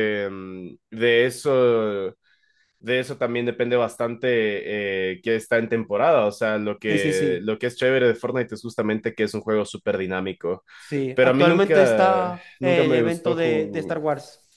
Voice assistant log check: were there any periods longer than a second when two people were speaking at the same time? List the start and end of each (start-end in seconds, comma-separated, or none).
11.1-14.0